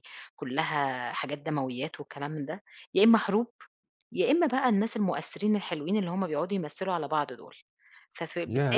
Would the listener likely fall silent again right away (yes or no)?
no